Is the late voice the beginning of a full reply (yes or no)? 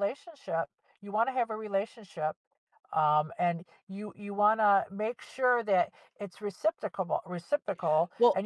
no